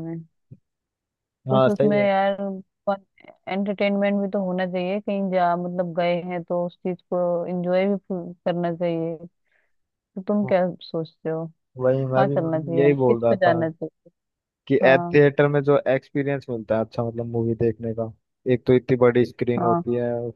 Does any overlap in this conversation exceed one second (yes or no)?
yes